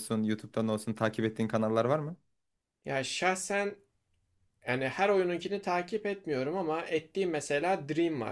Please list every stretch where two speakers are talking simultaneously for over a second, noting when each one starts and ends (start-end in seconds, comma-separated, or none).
none